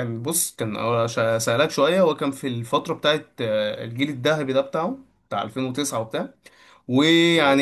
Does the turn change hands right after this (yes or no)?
no